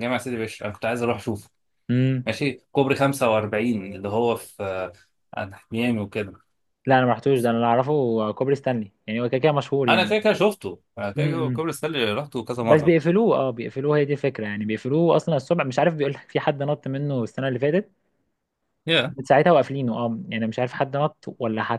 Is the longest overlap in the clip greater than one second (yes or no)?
no